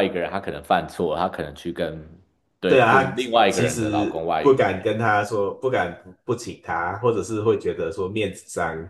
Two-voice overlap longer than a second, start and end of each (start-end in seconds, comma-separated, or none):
2.7-4.7